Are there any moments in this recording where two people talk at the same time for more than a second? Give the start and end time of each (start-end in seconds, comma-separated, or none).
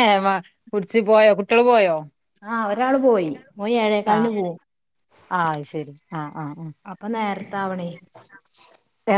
none